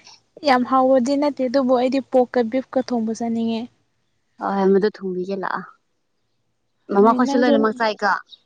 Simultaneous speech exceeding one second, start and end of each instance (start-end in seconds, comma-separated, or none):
none